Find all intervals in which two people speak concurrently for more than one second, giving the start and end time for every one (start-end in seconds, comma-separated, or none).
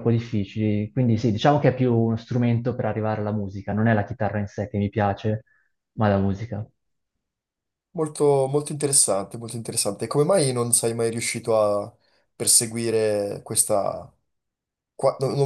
none